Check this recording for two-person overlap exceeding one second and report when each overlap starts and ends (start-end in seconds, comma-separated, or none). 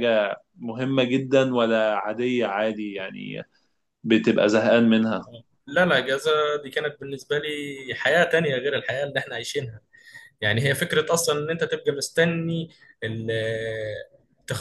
none